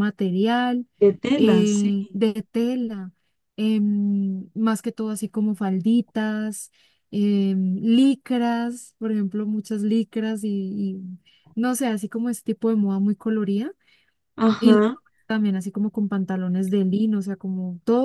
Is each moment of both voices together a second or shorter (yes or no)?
yes